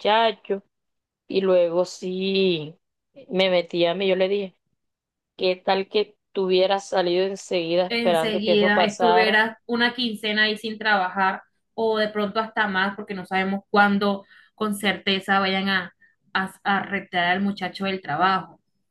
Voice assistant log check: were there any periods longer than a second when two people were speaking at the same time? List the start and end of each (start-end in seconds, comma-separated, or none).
7.9-9.4